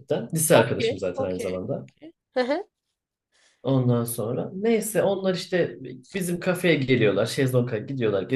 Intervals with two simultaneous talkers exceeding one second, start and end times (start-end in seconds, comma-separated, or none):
0.5-1.9